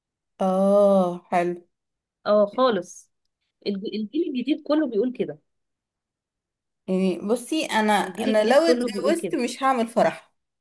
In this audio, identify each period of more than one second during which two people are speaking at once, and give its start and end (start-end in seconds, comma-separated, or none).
8.0-9.4